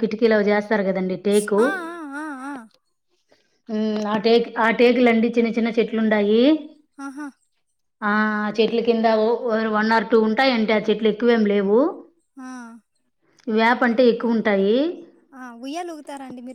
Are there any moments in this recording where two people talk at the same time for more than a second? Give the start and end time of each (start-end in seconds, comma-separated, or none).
none